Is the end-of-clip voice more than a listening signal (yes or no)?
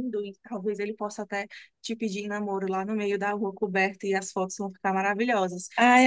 yes